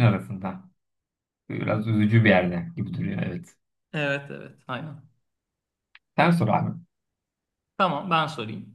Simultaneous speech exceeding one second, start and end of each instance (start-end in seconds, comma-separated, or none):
none